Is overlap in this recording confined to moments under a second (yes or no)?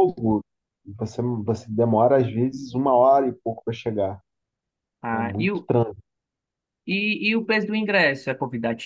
yes